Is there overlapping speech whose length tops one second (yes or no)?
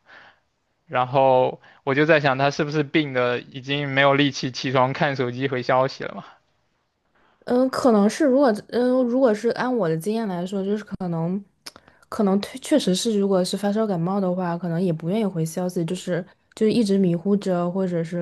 no